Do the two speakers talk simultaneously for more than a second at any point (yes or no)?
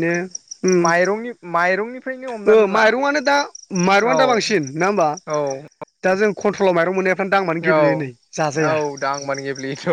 no